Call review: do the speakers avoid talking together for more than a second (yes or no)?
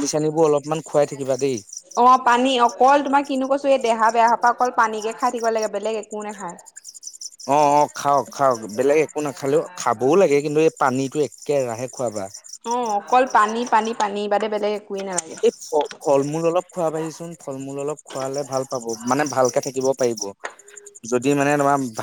yes